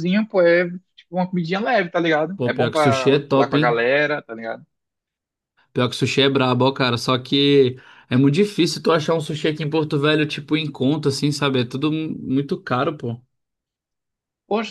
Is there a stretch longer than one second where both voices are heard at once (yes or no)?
yes